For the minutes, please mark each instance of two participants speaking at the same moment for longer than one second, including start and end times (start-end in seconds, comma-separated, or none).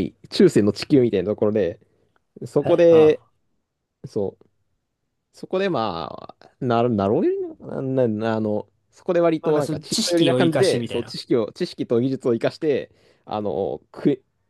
9.4-11.2